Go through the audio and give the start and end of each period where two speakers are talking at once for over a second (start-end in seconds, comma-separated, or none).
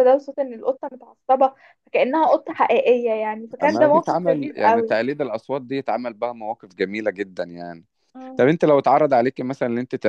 3.6-5.0